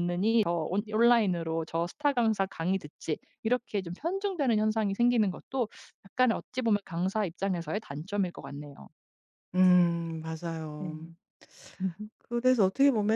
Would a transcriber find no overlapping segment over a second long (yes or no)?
yes